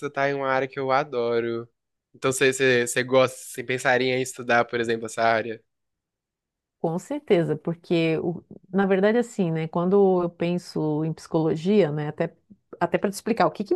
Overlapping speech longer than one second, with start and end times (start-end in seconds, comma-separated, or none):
none